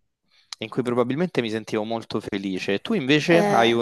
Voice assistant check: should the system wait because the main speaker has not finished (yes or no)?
yes